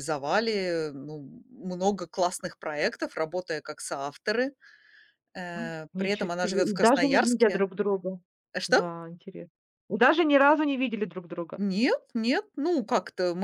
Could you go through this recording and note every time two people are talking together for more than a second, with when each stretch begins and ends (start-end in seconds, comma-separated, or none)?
5.5-7.7